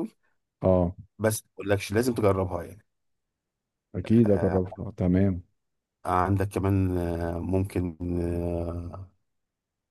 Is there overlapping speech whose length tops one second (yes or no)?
no